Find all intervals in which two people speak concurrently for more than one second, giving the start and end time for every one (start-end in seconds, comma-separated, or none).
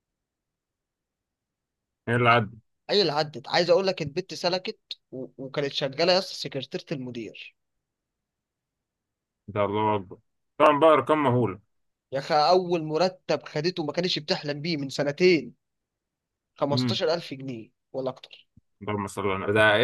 none